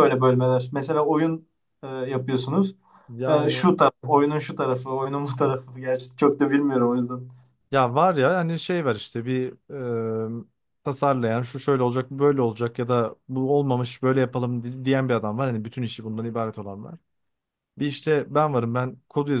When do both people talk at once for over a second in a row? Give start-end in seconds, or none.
none